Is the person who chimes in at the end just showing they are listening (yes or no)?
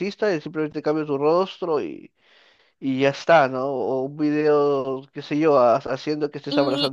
no